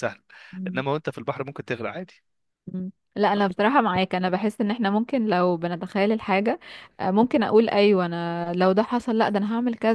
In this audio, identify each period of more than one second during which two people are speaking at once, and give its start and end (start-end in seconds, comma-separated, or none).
none